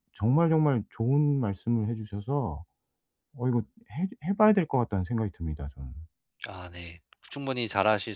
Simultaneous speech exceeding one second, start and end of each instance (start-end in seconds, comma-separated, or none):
none